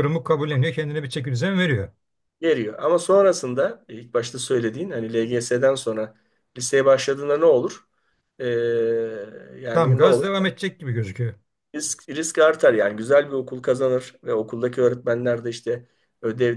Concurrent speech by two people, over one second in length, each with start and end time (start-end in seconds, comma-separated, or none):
none